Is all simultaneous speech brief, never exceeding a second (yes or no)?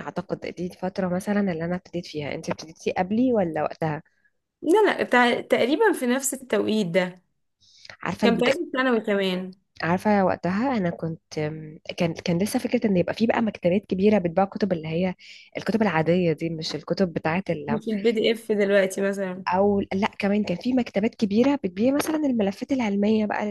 yes